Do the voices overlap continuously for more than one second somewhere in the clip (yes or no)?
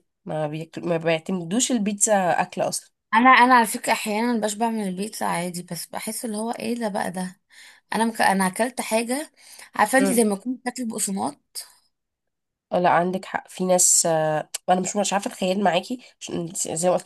no